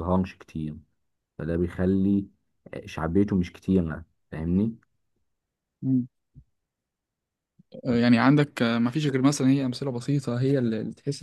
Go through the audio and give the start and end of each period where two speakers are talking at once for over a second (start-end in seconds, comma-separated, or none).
none